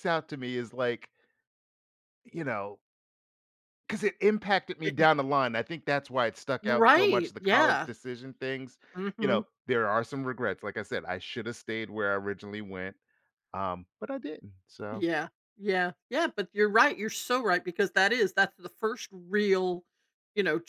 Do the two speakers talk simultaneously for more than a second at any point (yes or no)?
yes